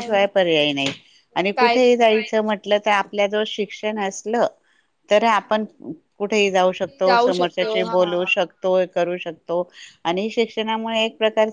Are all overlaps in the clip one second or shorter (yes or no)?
no